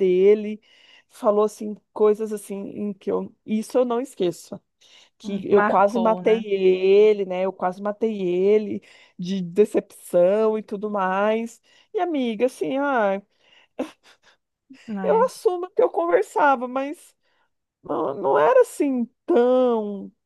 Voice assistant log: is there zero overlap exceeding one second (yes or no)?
no